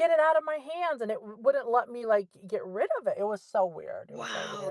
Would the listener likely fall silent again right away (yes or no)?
no